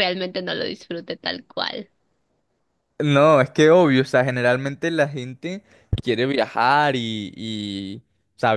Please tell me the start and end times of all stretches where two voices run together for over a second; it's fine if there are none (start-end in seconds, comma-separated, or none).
none